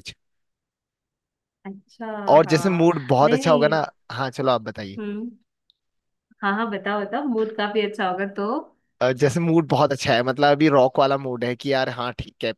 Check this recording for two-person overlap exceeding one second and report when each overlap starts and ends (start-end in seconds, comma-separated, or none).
2.5-3.8